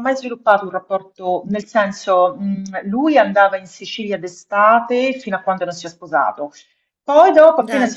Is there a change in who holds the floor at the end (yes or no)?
no